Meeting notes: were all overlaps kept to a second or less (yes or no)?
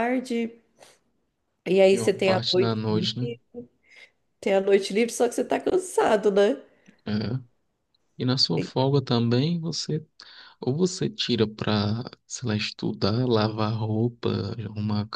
no